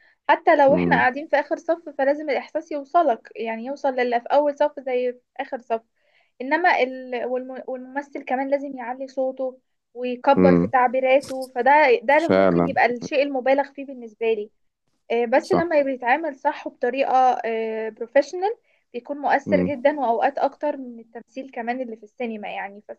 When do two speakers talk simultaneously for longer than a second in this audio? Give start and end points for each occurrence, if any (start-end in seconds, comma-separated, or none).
none